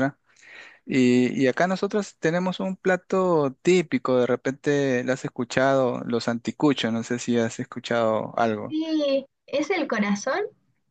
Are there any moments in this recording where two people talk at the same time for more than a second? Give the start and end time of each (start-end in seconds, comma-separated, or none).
none